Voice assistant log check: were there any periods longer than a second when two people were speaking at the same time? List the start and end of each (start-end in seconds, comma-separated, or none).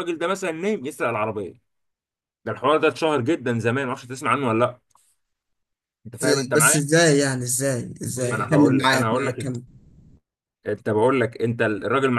8.3-9.5